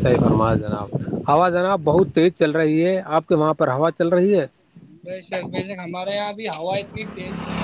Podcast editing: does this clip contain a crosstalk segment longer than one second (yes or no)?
no